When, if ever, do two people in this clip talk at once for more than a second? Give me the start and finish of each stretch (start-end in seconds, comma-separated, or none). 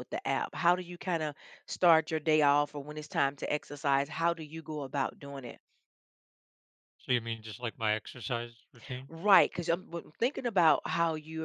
none